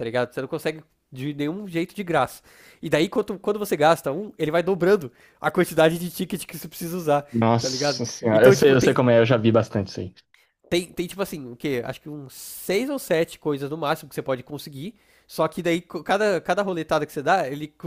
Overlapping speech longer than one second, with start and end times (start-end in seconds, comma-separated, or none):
7.3-9.0